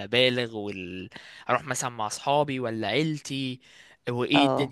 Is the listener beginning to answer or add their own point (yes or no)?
yes